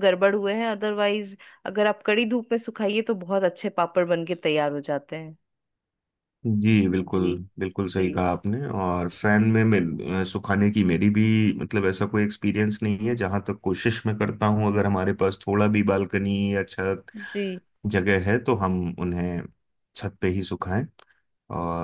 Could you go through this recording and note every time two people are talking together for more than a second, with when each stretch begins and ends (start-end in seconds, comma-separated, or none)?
none